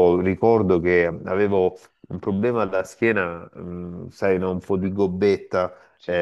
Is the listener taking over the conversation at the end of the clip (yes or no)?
no